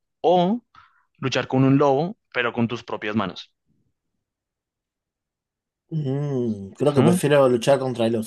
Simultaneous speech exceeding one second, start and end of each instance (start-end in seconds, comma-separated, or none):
none